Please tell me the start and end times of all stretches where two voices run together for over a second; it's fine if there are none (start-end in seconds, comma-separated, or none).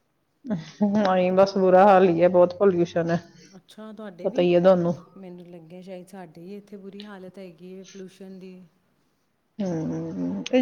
none